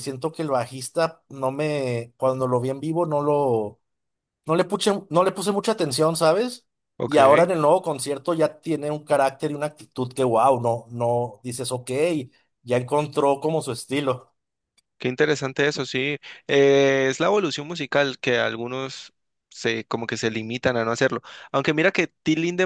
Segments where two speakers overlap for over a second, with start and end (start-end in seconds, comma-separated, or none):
none